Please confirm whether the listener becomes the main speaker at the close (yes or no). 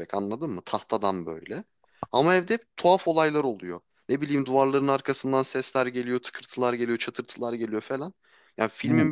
no